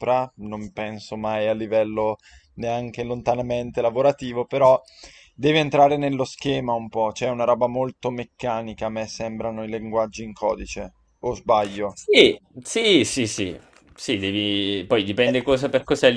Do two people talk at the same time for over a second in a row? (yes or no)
no